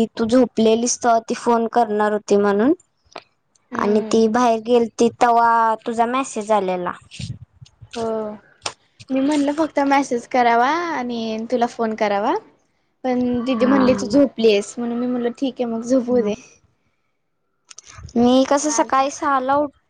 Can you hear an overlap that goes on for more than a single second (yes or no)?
no